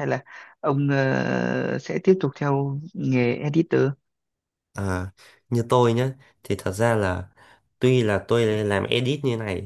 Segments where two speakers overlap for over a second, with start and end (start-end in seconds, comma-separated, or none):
none